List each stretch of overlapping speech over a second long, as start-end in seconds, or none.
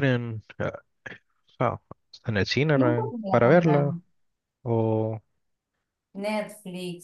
2.7-4.0